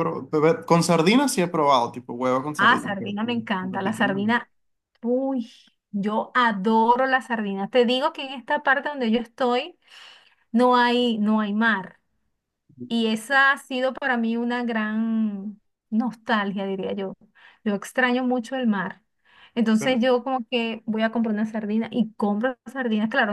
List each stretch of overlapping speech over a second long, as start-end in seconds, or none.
2.6-4.3